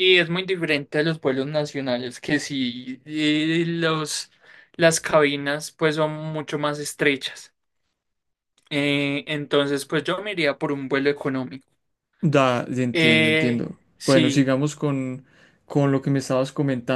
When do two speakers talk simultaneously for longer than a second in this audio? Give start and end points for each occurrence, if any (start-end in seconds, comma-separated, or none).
12.9-14.5